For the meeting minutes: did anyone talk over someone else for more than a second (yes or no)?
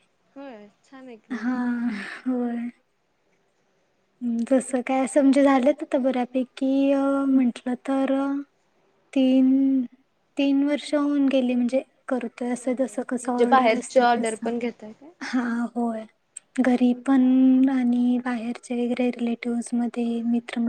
yes